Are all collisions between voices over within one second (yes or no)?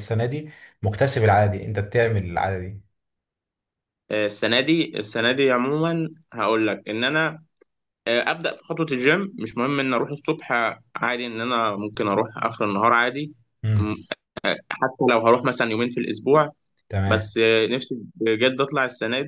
yes